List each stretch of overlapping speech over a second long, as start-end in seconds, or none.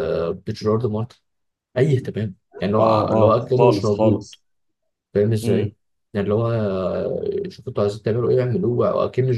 2.8-4.3